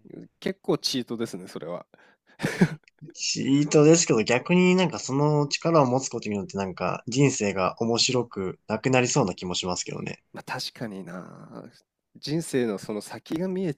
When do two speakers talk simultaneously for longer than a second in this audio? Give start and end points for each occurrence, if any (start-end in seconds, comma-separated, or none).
none